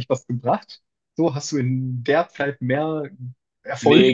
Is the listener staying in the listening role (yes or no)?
no